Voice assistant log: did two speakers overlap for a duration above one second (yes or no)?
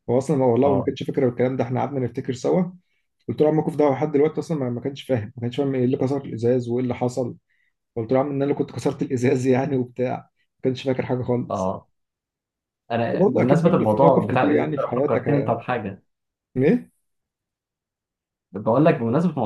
yes